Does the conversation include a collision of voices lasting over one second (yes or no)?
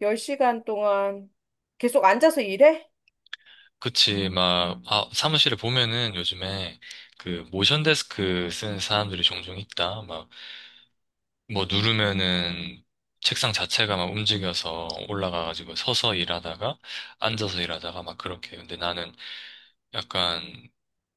no